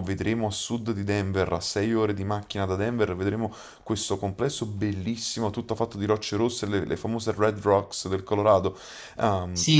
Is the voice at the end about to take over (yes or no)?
yes